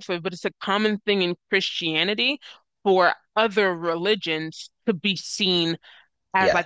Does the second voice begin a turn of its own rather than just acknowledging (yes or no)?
no